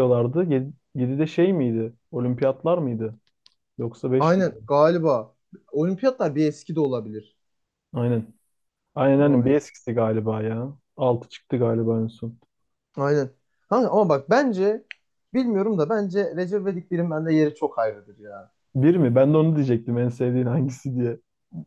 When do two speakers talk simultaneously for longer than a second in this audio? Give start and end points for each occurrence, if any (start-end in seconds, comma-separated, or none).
none